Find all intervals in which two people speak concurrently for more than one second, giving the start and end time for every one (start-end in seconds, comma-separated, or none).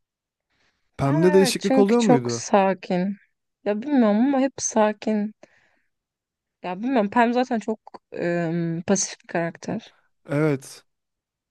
1.0-2.5